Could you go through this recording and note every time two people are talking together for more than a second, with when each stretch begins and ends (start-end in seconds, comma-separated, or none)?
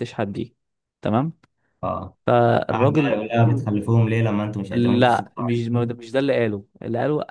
4.7-6.0